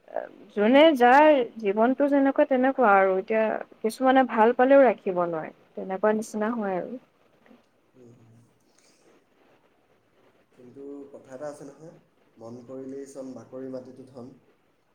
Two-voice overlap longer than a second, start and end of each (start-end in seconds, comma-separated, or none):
none